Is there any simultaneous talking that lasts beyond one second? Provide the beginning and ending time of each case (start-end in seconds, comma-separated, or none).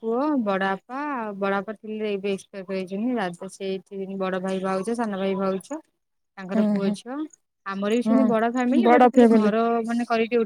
8.1-9.5